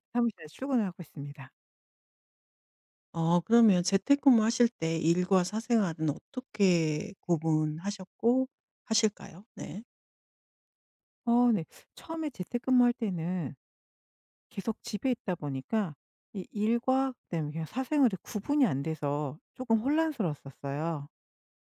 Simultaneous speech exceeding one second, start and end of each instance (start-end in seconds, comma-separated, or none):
none